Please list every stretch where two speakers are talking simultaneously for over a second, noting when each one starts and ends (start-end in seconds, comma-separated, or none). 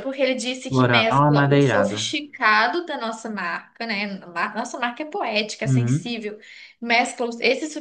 0.7-2.0